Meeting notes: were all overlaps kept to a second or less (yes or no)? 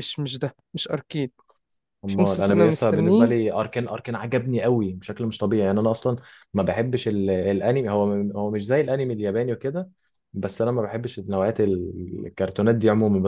no